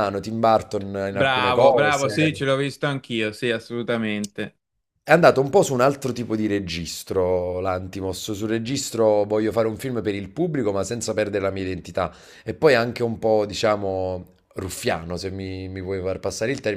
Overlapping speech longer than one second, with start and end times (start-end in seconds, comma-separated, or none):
1.1-2.4